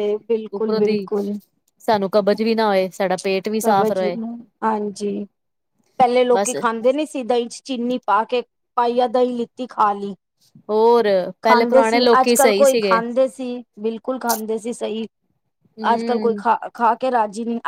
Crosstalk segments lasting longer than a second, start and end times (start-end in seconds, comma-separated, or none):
11.4-13.0